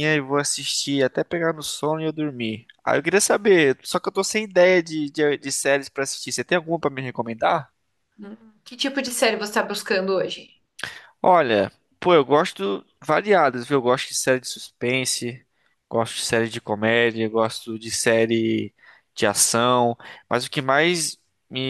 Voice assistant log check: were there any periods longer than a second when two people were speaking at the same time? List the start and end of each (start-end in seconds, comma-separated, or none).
none